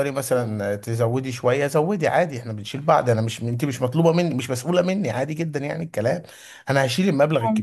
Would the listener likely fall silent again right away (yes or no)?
yes